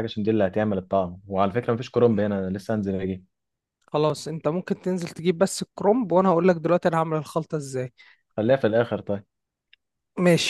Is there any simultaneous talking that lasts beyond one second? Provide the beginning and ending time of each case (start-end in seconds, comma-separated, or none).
none